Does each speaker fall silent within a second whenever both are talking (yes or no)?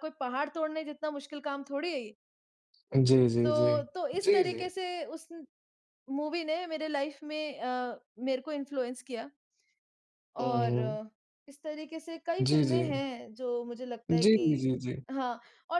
yes